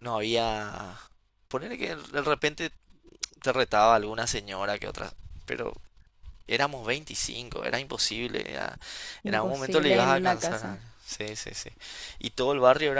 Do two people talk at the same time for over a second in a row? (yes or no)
yes